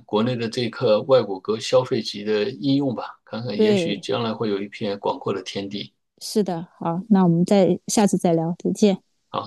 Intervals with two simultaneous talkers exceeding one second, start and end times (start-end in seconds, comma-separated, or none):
none